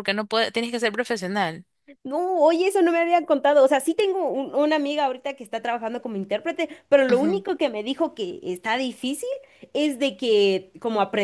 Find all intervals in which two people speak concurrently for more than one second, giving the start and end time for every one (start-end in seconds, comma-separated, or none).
none